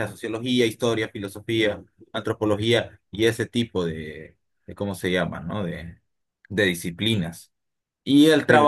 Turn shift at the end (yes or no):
no